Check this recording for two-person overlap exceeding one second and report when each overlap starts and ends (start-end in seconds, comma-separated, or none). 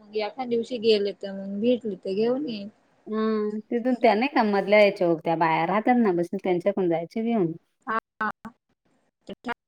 none